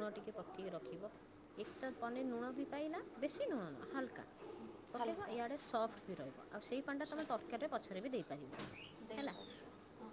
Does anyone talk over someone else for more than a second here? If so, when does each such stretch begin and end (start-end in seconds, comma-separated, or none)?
none